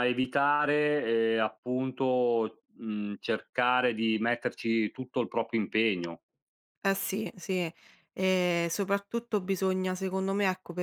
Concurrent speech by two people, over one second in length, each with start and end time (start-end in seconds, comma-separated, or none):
none